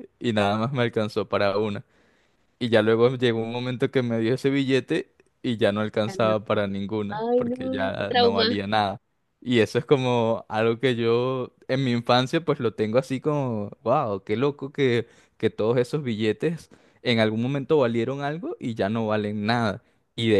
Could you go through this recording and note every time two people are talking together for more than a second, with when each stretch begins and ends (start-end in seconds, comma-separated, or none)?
7.1-8.6